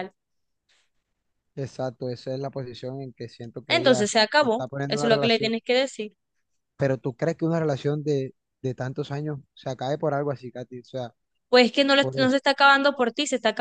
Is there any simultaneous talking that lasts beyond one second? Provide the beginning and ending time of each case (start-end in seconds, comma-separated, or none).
3.7-5.5